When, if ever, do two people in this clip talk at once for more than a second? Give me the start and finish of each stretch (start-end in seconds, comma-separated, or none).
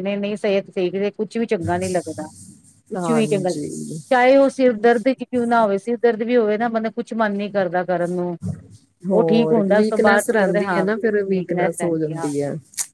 9.1-10.8